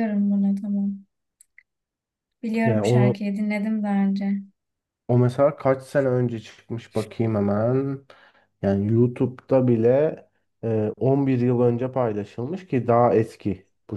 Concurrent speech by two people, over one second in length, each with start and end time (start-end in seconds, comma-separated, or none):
none